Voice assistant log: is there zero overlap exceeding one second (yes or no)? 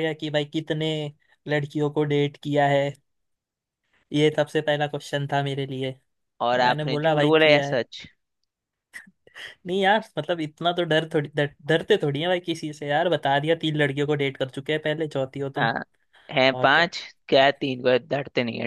no